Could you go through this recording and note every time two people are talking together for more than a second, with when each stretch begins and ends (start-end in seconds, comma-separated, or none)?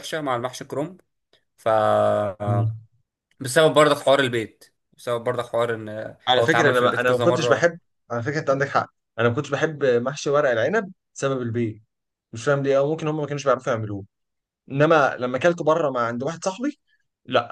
6.3-7.7